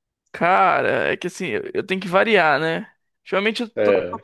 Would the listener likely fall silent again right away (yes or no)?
yes